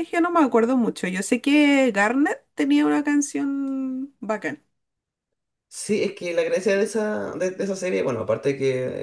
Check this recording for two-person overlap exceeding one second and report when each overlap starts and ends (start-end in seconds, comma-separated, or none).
none